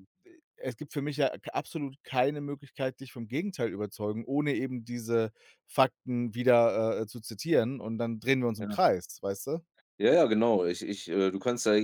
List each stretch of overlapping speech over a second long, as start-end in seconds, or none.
none